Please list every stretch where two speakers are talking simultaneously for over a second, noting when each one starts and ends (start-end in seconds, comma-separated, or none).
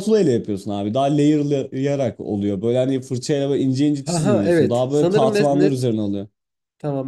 4.0-5.7